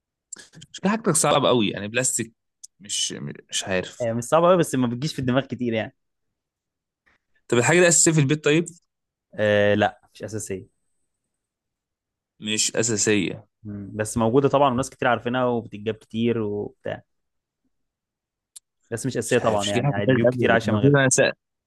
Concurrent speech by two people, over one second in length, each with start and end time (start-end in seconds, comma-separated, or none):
19.3-21.0